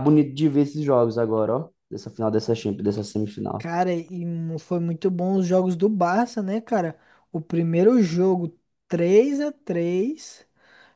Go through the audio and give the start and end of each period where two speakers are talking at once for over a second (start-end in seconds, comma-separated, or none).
none